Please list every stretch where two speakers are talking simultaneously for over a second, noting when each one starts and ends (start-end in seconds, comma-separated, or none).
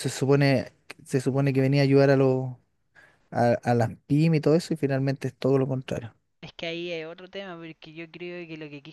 none